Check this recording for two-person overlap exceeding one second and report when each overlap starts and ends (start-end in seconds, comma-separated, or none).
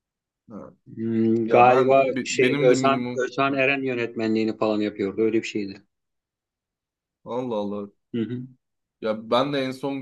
1.4-3.6